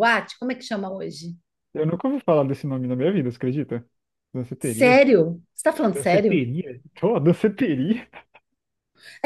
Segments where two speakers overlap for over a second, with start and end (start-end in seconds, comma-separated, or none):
none